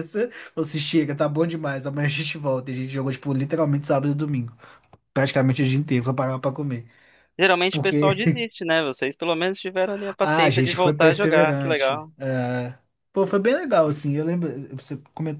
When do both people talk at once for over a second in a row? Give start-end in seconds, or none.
10.2-12.1